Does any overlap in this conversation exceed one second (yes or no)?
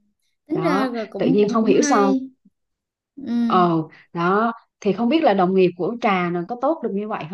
yes